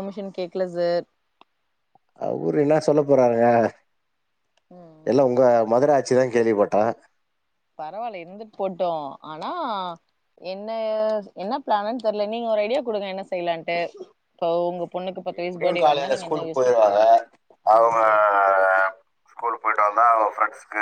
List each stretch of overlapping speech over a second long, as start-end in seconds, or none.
15.4-16.9